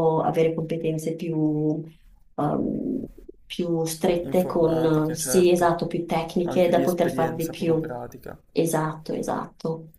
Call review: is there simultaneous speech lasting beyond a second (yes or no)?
yes